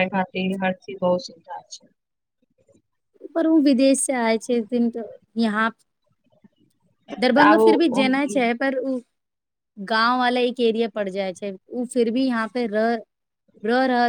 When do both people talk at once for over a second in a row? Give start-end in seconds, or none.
none